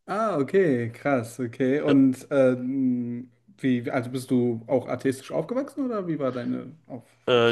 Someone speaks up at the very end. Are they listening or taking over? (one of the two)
taking over